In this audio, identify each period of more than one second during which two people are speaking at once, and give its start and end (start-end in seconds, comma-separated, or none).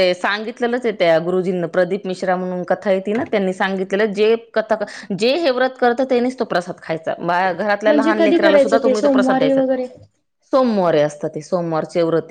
7.9-9.6